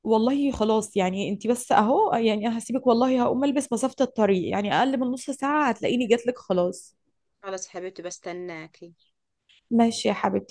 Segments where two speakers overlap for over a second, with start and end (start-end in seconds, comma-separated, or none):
none